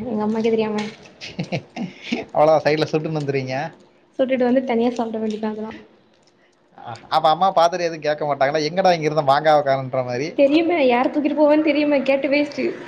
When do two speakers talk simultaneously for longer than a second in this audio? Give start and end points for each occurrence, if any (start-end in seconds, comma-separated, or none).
none